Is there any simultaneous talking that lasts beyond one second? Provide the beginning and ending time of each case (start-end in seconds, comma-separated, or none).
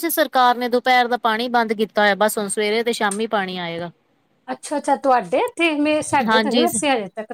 none